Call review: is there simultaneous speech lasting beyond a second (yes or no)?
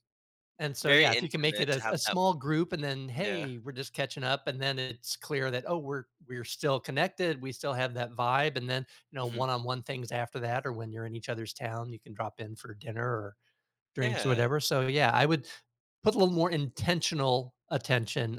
yes